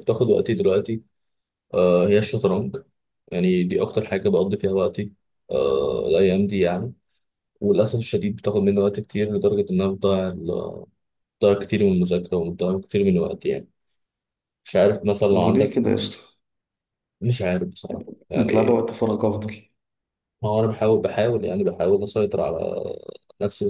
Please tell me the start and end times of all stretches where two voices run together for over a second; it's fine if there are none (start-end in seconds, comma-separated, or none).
none